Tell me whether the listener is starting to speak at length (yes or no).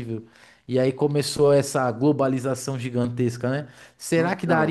no